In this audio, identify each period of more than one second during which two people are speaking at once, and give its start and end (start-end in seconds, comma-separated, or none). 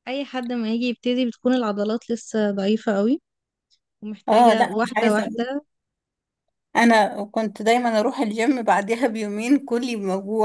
4.3-5.5